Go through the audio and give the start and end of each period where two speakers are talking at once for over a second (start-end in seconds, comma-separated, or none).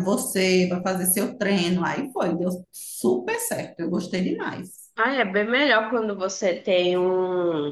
none